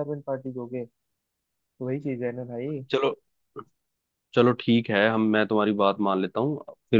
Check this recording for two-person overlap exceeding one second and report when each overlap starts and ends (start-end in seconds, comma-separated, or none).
none